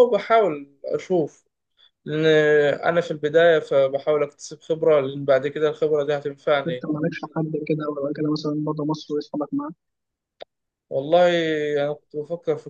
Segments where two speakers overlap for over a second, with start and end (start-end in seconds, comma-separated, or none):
none